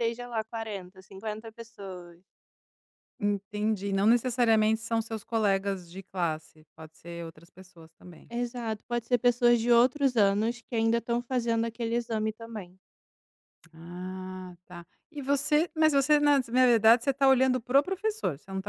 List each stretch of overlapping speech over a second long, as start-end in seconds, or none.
none